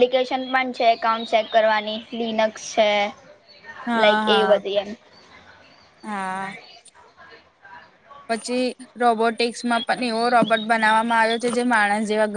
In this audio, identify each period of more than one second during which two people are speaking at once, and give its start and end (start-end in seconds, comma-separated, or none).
none